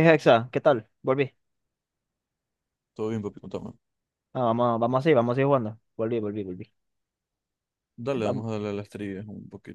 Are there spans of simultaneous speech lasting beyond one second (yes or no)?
no